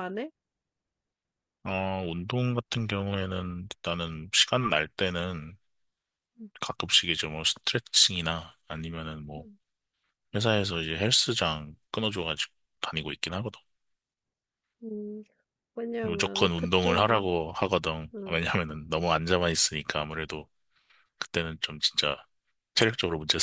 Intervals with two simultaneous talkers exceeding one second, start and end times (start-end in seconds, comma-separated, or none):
16.0-17.3